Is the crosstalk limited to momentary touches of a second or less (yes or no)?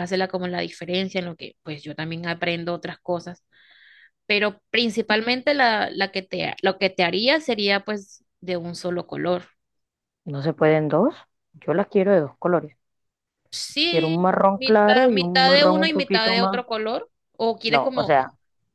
no